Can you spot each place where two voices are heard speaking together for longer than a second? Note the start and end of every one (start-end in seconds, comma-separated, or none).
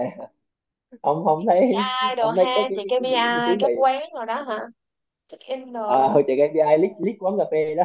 1.4-3.7